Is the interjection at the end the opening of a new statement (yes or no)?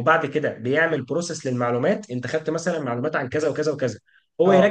no